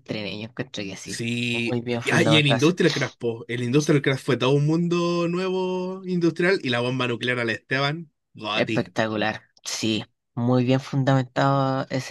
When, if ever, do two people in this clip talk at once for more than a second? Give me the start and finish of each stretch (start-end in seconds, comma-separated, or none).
1.1-2.7